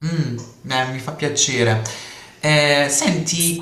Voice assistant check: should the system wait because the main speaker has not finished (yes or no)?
yes